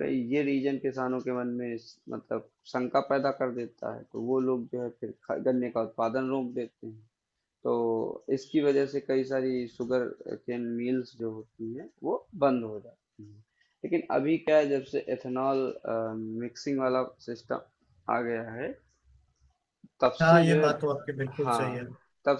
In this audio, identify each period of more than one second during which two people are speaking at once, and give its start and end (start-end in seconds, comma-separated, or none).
20.2-21.8